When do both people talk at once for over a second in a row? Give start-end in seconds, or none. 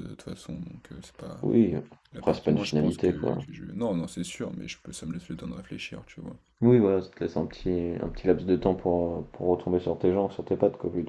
2.1-3.4